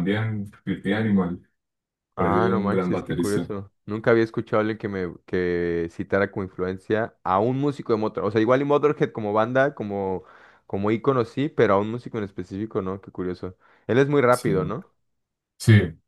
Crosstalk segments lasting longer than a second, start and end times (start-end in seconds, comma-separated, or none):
2.2-3.5